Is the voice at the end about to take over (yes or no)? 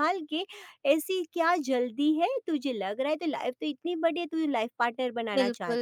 yes